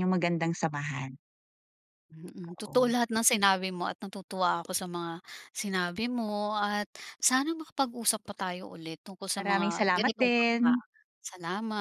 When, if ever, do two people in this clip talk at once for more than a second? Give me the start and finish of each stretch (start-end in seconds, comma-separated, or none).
9.3-10.7